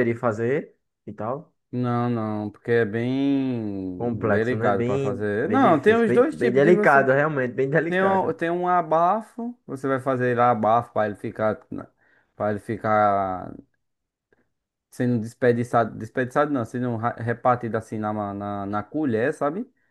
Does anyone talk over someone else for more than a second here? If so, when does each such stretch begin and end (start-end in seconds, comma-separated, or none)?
4.0-7.0